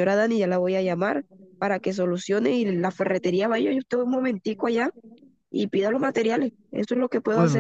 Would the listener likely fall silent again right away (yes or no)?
no